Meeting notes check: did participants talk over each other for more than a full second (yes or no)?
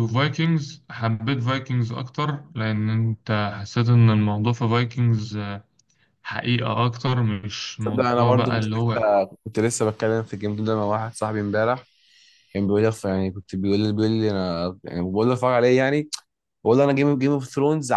yes